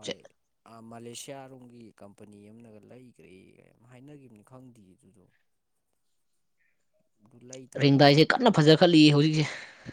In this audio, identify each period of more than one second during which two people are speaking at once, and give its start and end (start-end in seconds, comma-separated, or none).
none